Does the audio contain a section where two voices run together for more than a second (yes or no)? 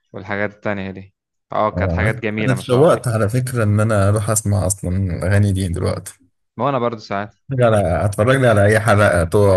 yes